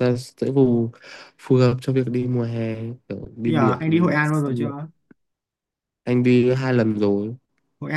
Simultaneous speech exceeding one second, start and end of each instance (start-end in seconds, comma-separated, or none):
3.5-4.7